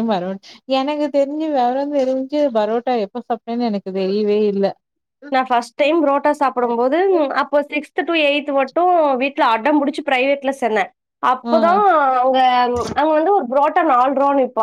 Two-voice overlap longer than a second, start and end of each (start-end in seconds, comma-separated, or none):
none